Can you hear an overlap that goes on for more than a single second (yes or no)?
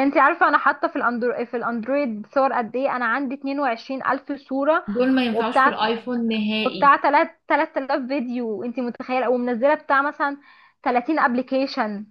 no